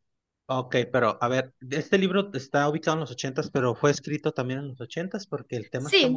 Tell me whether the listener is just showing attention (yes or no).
no